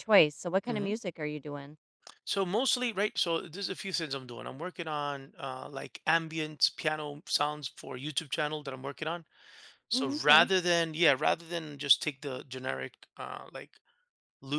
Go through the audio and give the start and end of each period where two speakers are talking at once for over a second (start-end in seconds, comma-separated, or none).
none